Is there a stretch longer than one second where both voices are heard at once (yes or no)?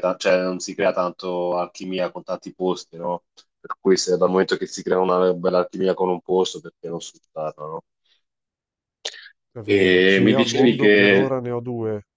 yes